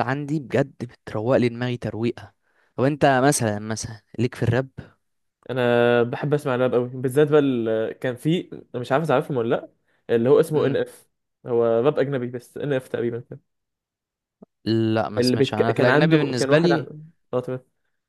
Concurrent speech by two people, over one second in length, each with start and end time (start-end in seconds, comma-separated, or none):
15.2-16.9